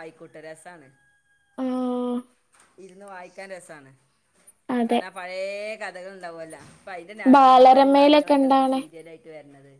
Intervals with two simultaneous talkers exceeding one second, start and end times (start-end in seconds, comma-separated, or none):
7.3-8.8